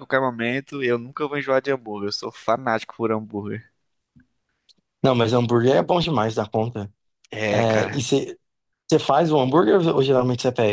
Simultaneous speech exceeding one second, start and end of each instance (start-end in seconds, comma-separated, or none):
none